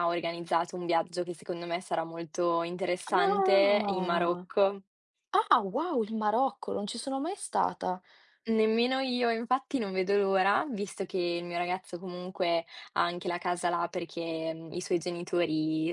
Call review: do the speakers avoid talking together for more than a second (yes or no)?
no